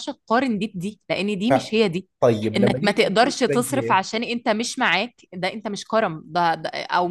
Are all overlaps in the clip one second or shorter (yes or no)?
no